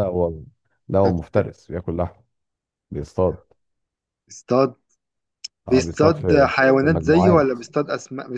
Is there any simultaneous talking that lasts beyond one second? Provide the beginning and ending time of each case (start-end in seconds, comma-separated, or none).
5.7-7.6